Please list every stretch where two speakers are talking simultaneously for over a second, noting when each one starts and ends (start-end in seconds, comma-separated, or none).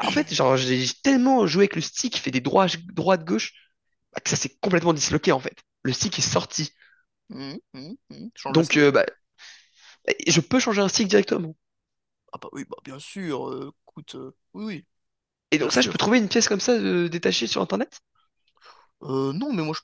none